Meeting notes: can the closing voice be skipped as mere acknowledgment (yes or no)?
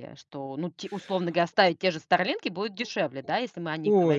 no